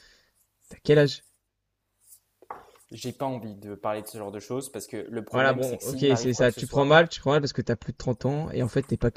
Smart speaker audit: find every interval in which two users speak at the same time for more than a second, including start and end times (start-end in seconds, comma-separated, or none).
5.3-7.0